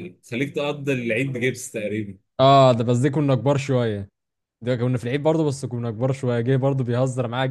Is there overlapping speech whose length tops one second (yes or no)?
no